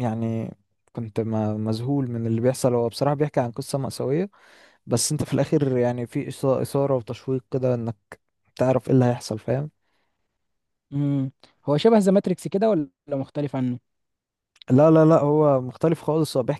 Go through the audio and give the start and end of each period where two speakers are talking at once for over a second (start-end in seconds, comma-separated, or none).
none